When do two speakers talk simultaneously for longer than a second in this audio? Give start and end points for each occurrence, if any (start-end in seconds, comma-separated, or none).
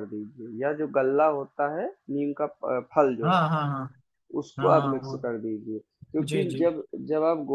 none